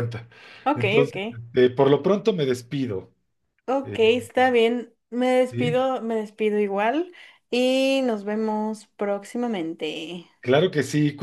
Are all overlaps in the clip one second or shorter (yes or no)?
yes